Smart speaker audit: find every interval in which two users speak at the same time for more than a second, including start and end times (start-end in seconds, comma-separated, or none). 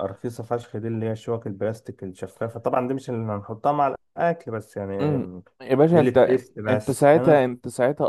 5.9-7.4